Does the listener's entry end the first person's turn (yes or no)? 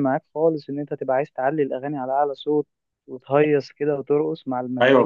yes